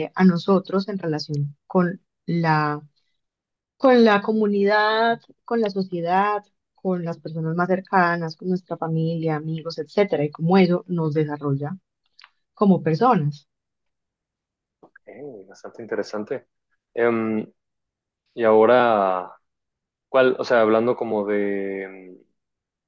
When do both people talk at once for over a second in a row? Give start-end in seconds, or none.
none